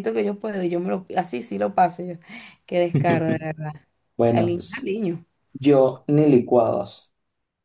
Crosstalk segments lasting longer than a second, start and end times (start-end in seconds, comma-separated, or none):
none